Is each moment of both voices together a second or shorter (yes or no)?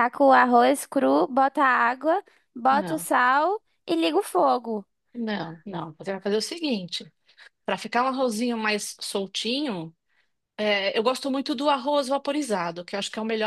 yes